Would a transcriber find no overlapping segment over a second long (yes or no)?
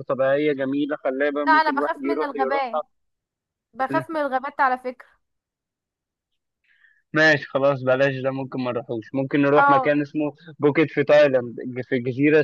no